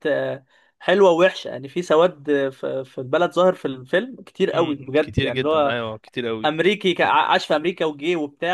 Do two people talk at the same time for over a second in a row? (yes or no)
yes